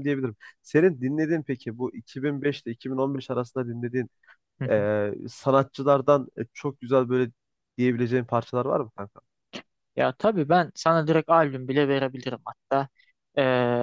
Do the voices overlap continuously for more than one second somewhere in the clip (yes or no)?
no